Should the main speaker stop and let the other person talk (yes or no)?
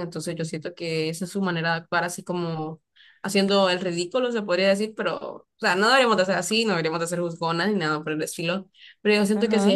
no